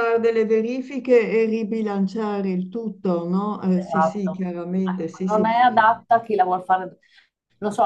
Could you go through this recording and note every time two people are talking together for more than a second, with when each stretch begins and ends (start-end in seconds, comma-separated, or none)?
3.7-5.5